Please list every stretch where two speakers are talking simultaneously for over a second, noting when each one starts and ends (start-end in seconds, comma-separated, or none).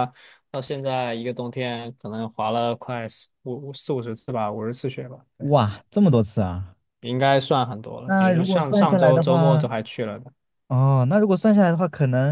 8.0-9.7